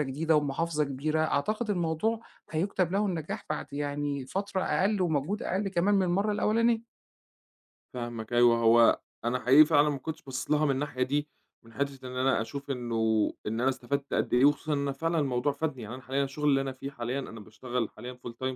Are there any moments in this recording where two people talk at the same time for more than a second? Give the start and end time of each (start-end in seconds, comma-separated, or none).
none